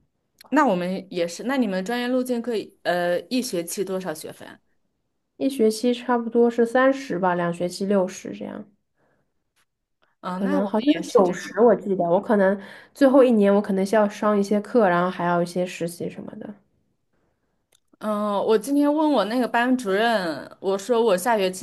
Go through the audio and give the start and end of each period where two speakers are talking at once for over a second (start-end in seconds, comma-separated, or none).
10.3-11.8